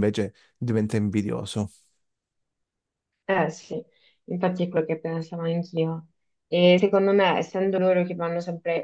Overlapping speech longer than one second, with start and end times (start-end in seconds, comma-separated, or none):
none